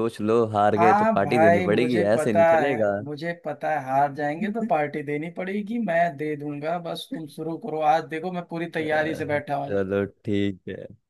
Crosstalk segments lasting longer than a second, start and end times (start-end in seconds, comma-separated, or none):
0.8-2.9